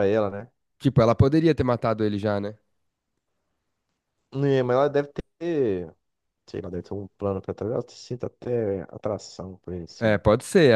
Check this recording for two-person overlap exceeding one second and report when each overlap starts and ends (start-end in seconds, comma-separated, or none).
none